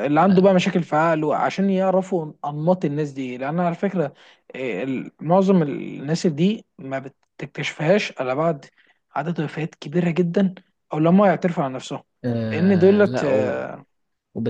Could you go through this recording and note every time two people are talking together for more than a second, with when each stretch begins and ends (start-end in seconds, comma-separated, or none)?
12.4-13.7